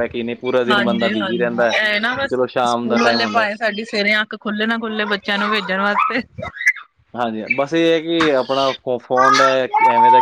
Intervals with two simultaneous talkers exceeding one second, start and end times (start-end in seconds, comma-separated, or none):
0.7-3.5